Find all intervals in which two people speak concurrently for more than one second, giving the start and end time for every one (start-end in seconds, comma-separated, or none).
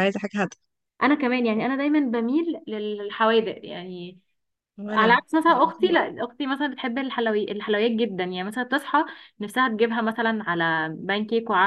4.9-6.1